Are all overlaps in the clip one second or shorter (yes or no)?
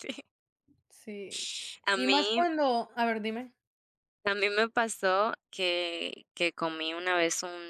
yes